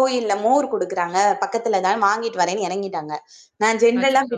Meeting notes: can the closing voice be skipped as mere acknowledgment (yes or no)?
yes